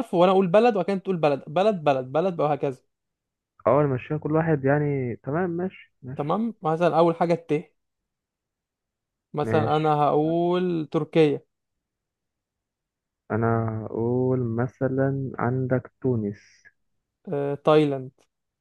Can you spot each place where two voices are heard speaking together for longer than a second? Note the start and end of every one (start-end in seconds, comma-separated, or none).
none